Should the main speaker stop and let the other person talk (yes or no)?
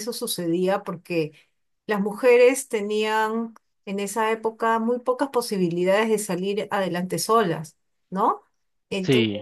no